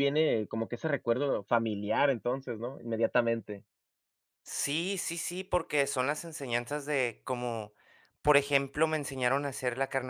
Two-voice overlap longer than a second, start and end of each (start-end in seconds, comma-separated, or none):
none